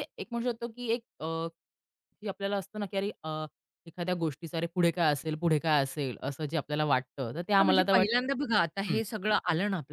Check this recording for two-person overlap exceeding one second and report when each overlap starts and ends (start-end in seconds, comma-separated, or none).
7.6-9.0